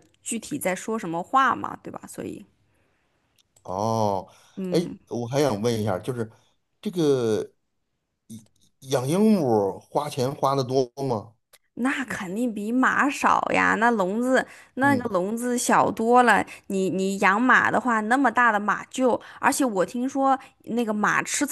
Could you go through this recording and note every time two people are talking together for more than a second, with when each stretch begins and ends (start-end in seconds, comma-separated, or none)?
none